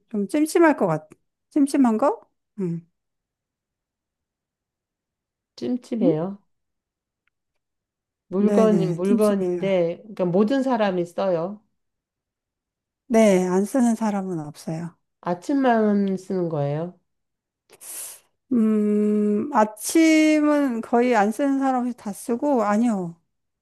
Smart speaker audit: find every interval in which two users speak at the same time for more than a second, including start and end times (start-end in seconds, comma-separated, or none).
8.4-9.7